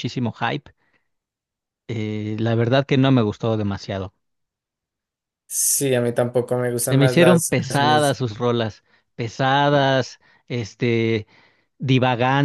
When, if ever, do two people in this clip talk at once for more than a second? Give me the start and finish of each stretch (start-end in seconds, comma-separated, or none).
6.8-8.2